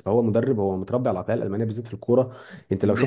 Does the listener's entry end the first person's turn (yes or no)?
no